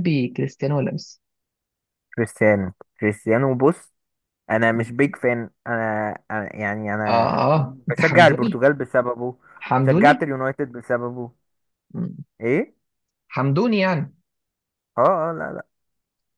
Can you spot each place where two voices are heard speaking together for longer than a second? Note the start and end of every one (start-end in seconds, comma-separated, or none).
7.1-8.6